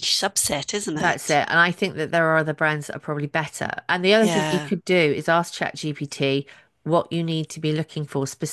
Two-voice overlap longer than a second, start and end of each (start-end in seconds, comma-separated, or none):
none